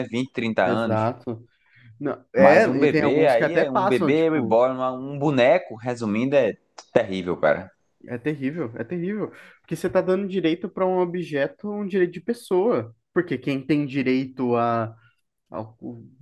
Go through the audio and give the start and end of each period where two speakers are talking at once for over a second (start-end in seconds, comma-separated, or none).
2.4-4.6